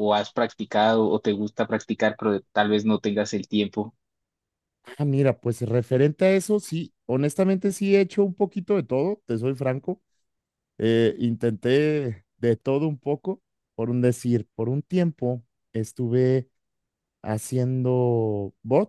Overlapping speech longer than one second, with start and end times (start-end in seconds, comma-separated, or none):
none